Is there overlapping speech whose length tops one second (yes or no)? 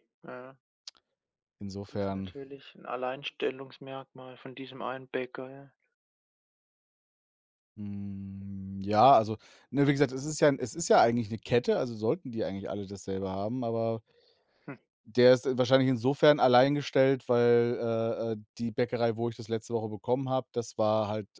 no